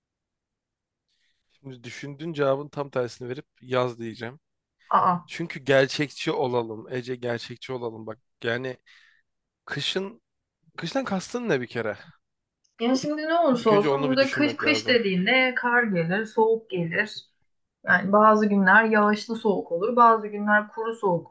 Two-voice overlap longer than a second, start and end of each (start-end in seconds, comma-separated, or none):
13.6-15.0